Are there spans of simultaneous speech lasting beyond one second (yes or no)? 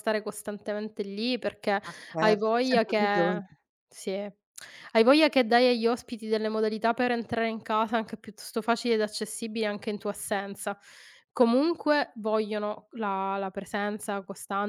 yes